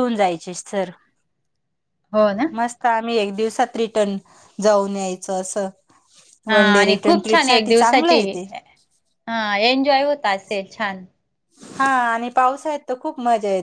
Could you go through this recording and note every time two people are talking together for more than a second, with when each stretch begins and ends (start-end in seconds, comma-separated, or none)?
6.5-8.2